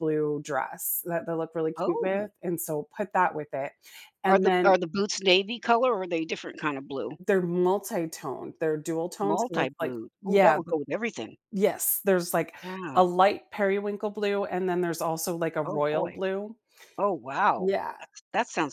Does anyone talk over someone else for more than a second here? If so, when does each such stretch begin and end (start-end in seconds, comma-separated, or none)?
9.2-10.8